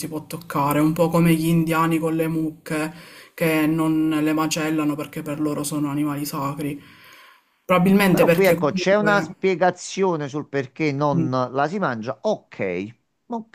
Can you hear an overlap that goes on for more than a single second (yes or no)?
yes